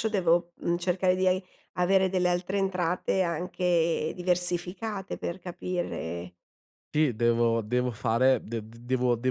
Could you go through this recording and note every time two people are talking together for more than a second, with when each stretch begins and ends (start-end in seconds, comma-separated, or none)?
none